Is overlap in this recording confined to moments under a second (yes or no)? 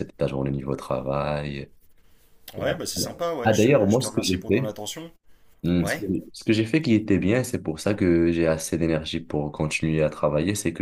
no